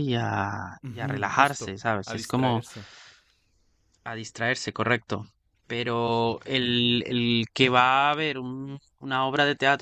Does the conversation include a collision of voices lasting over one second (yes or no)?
yes